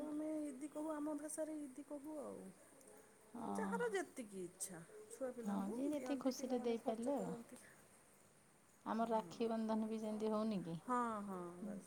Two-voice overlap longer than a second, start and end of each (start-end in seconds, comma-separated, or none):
5.6-7.3